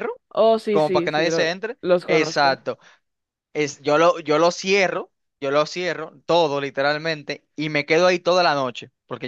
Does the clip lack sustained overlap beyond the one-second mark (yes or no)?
no